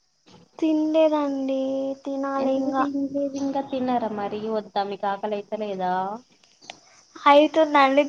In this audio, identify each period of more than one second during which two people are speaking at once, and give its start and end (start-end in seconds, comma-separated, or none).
none